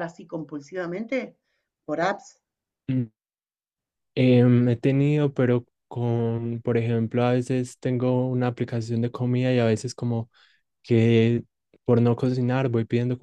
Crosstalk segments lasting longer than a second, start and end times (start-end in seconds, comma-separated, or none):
none